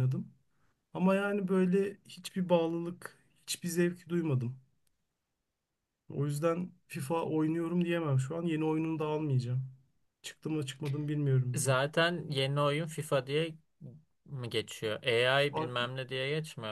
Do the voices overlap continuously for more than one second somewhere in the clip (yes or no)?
no